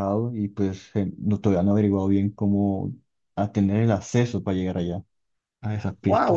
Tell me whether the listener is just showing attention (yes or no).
no